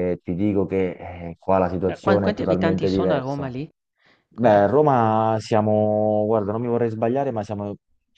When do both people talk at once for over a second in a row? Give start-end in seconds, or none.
1.9-3.5